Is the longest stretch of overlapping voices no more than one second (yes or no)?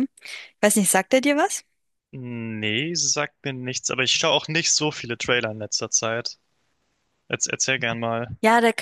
yes